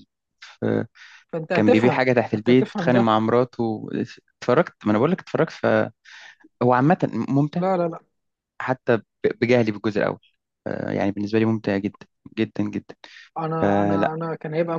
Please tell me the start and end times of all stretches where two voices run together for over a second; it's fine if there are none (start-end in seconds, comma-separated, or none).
1.5-3.1